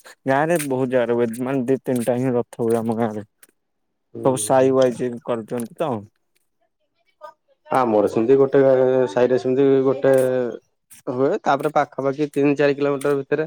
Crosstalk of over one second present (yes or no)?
no